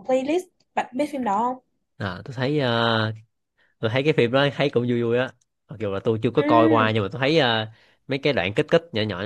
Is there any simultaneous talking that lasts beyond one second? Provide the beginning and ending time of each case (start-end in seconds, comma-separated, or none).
none